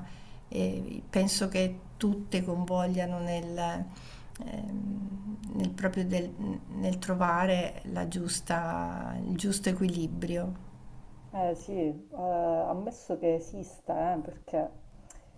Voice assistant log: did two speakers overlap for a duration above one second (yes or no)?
no